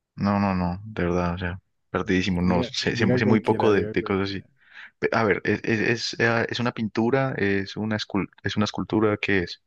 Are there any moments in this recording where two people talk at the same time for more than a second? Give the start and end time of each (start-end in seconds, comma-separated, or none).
2.5-4.4